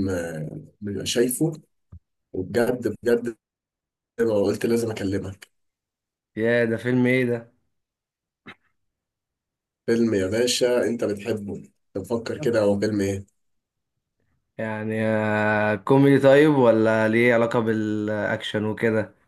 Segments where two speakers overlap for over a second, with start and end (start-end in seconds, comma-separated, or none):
none